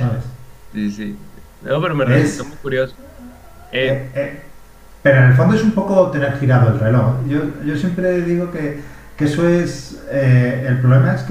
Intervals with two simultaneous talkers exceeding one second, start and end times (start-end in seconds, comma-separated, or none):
none